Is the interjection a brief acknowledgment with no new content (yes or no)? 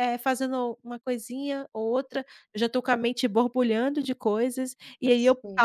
yes